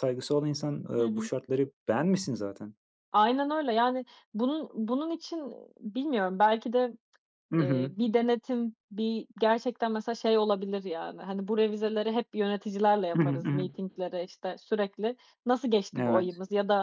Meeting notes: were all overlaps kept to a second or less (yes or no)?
yes